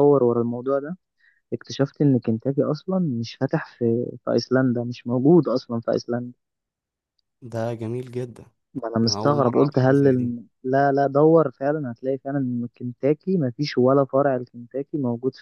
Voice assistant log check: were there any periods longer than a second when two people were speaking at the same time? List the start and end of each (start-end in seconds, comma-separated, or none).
9.0-10.3